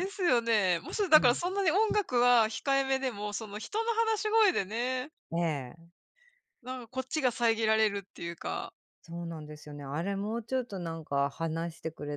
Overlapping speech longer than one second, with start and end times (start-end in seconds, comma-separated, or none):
none